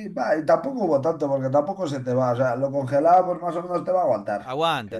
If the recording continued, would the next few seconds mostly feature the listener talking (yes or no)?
yes